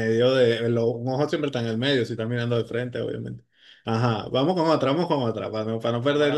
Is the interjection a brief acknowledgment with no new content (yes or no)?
no